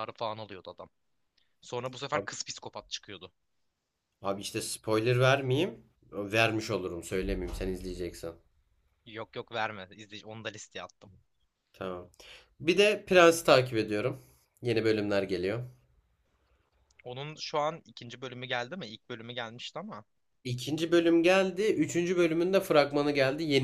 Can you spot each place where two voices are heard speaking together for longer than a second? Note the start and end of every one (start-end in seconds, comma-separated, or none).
none